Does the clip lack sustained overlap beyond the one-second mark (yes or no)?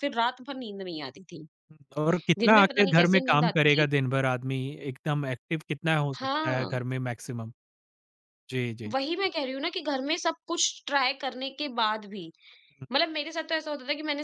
no